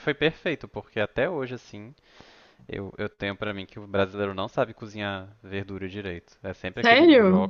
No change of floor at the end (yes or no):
yes